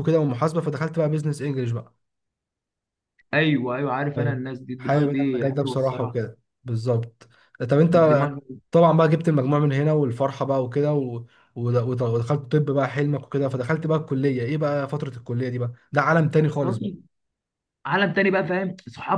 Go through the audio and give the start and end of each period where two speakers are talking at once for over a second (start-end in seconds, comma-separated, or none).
4.2-6.1